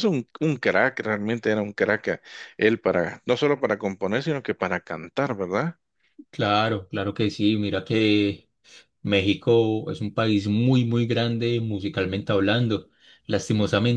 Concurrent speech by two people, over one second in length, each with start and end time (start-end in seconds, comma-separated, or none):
none